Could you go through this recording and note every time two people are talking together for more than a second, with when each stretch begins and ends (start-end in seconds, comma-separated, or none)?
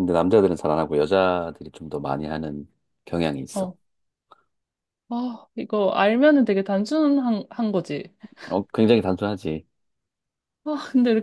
none